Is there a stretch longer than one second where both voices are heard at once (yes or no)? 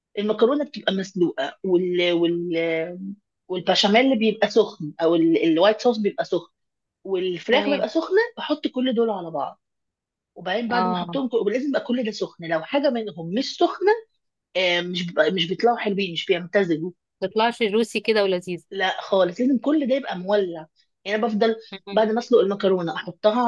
no